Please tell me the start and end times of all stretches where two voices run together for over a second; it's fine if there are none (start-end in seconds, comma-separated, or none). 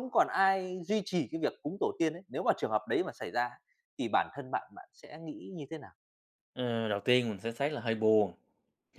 none